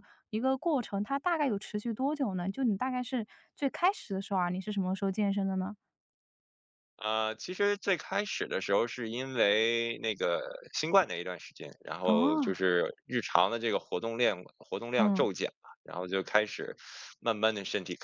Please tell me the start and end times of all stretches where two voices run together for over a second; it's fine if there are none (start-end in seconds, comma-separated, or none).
none